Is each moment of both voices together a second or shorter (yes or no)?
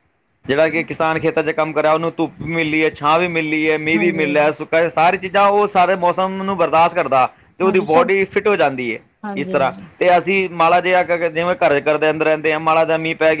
yes